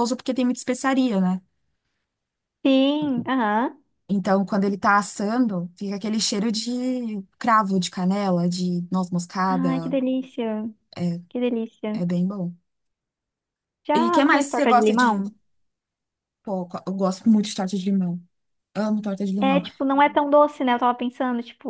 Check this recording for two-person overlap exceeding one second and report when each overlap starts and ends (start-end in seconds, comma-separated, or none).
14.0-15.2